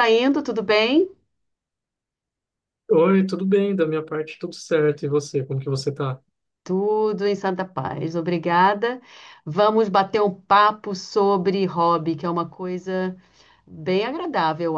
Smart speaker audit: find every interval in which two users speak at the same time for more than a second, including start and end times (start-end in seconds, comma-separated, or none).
none